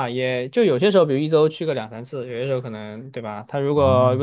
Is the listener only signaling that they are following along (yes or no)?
yes